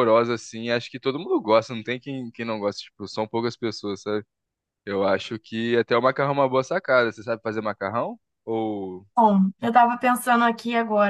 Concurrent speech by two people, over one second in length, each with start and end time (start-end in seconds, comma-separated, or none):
none